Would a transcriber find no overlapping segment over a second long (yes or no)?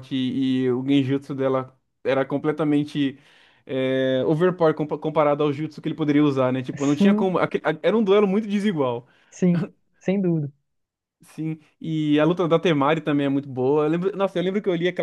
yes